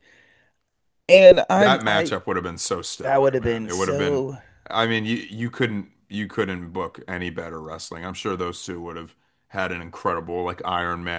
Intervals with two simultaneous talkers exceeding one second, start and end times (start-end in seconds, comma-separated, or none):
3.0-4.2